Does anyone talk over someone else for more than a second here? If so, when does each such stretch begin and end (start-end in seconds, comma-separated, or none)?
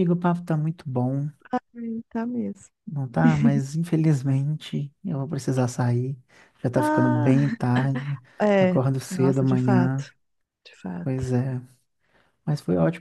8.6-10.1